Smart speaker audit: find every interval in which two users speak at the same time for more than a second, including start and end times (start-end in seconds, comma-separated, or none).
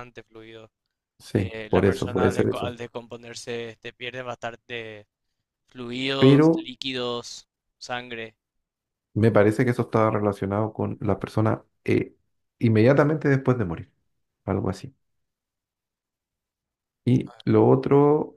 1.4-2.8